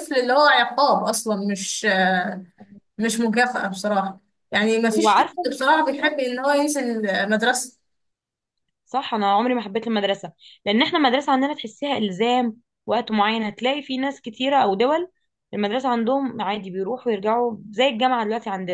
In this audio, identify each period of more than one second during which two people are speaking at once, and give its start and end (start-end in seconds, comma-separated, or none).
4.9-6.2